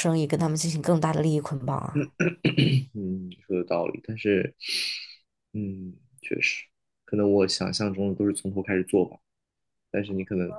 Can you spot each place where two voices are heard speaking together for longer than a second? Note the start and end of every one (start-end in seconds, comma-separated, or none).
none